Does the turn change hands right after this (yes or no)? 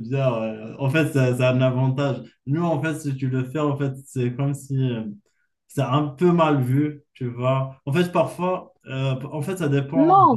yes